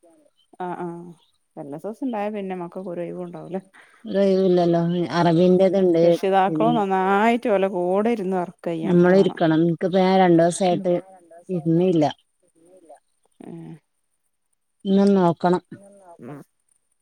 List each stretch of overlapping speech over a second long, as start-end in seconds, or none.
none